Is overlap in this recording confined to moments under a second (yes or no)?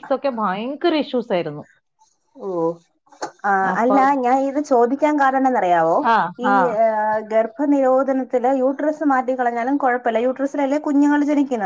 yes